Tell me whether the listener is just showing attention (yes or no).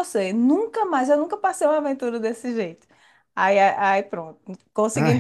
yes